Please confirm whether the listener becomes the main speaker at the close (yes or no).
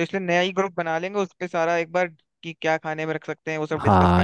yes